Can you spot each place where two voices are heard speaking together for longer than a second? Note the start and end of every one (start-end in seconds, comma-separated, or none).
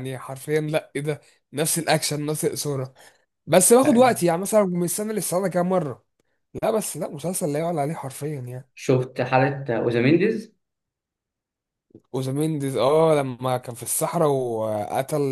none